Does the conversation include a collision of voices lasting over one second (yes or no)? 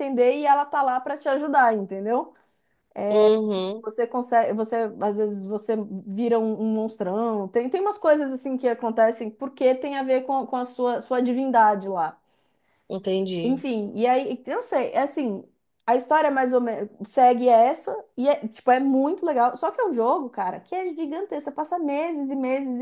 no